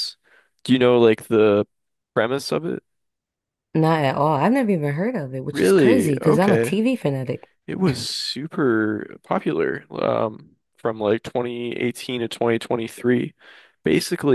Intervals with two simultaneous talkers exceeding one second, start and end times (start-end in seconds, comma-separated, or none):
5.5-6.8